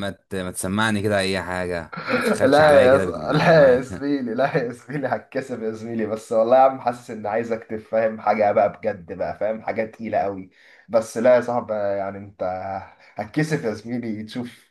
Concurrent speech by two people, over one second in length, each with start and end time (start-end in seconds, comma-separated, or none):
2.3-4.0